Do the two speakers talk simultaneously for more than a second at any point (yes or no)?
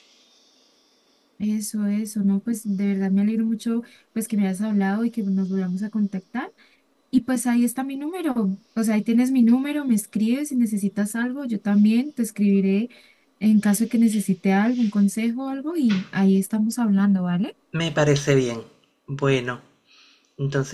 no